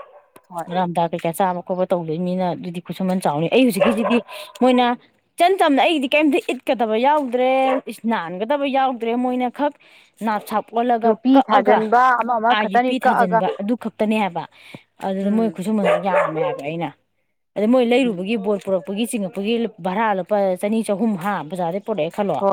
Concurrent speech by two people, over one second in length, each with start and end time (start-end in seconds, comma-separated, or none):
11.0-13.4